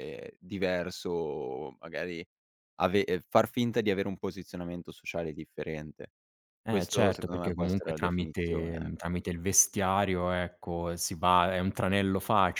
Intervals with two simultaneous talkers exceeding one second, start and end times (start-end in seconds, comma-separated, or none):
6.7-9.0